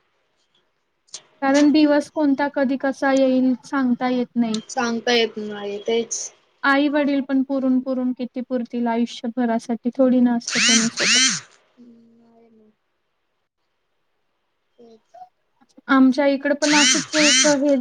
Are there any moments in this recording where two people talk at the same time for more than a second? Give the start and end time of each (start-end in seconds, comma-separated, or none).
none